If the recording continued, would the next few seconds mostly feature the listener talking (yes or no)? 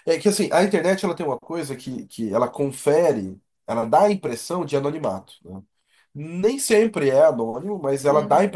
no